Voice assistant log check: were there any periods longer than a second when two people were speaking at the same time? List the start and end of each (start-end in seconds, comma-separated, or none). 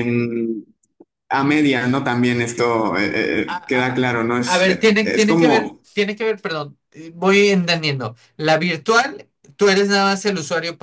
3.5-5.8